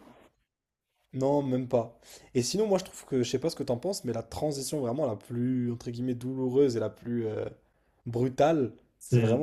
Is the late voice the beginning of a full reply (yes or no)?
no